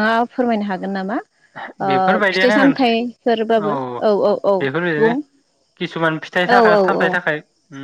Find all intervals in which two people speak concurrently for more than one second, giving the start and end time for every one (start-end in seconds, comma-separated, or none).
2.3-3.7